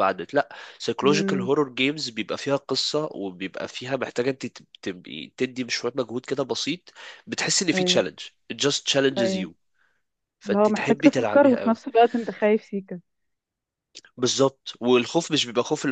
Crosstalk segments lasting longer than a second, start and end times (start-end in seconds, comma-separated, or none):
10.5-11.8